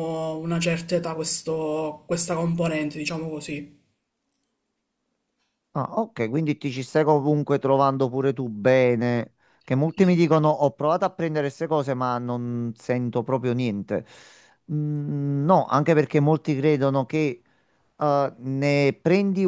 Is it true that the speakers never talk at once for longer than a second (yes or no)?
yes